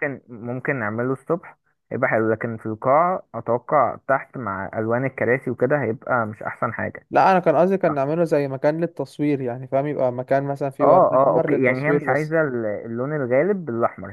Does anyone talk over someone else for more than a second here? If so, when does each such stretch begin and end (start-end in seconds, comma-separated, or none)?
10.8-12.3